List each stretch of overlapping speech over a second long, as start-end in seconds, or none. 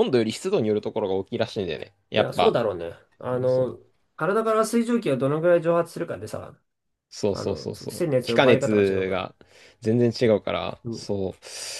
7.3-9.3